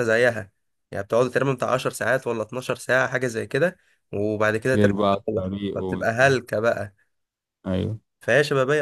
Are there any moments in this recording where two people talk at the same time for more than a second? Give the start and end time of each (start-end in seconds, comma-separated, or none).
4.8-6.4